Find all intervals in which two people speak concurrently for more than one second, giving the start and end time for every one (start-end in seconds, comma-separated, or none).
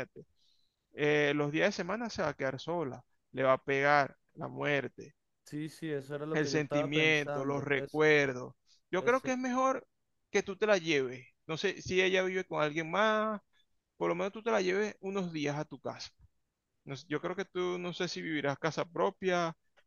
6.3-8.0